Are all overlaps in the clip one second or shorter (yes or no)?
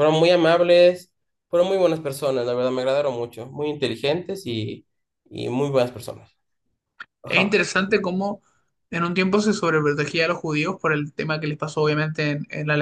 yes